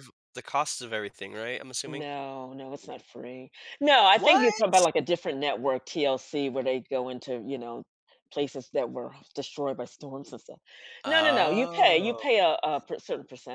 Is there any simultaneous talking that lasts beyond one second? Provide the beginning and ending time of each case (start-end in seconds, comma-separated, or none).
11.1-12.3